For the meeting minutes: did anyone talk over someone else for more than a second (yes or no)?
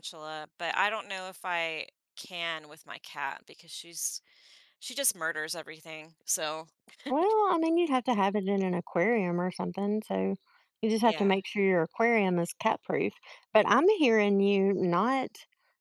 no